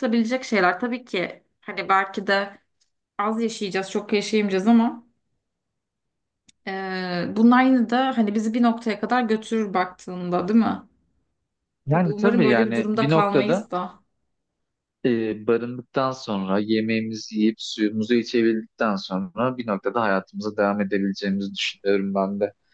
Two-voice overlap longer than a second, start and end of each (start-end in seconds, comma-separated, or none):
11.9-13.7